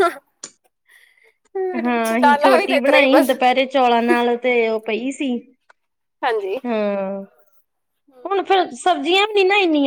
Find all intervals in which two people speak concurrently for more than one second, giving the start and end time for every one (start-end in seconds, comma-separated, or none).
1.8-3.3